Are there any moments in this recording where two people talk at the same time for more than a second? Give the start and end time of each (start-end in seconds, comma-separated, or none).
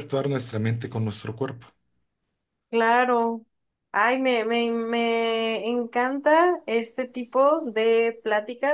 none